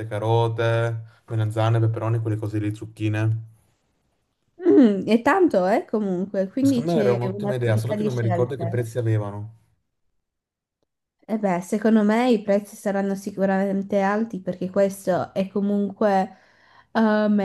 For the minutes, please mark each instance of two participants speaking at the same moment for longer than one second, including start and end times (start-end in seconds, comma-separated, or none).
6.6-8.8